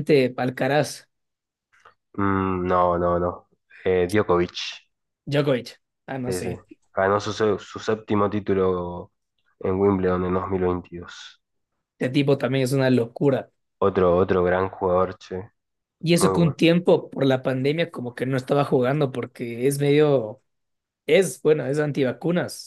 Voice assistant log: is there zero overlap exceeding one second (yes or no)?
yes